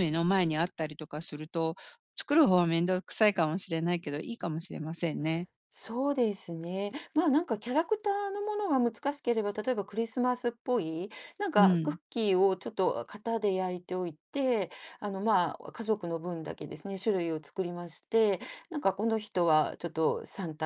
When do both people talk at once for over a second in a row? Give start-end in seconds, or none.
none